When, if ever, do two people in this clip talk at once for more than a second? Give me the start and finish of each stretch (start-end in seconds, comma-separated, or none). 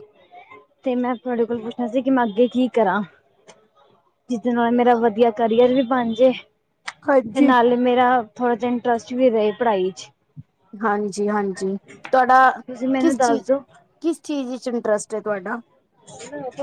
none